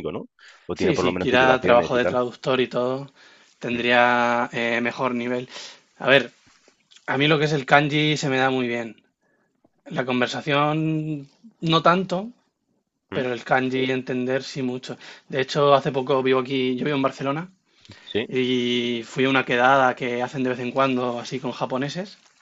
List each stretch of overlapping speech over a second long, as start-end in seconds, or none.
0.8-2.2